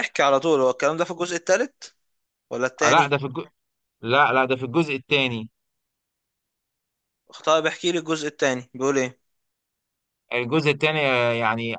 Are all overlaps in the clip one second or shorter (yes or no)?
yes